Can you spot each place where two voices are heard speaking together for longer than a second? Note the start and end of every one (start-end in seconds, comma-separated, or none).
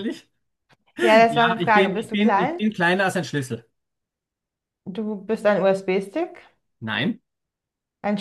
1.3-2.6